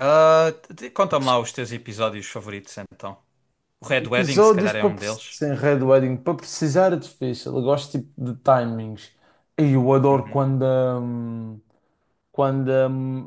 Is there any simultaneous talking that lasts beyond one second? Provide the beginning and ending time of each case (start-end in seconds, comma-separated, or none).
4.0-5.4